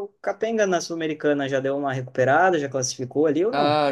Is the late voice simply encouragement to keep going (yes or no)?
no